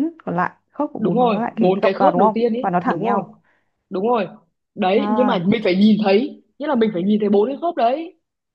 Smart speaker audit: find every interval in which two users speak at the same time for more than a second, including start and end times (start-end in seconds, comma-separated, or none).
1.0-3.2